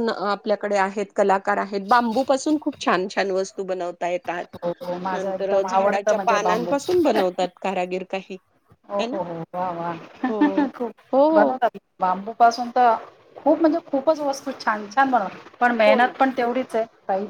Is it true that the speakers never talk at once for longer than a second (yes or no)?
no